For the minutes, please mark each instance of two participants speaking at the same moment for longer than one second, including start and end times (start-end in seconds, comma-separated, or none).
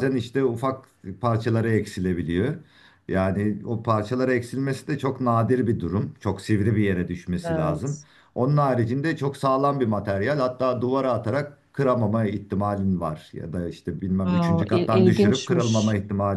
14.3-15.7